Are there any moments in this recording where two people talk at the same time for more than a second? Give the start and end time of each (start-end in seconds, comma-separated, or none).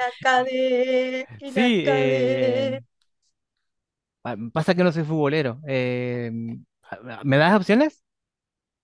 1.4-2.7